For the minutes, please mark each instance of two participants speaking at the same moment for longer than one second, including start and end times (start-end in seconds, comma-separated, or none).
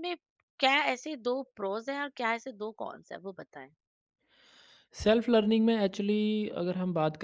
none